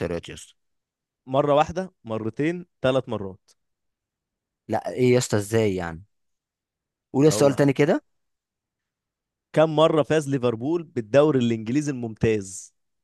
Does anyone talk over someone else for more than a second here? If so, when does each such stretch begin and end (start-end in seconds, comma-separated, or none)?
none